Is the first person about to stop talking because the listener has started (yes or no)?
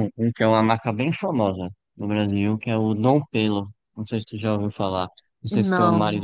no